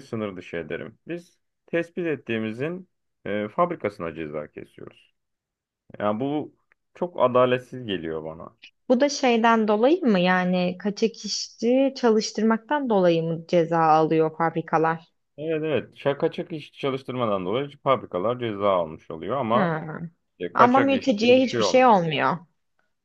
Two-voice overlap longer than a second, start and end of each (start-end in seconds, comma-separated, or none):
20.5-21.9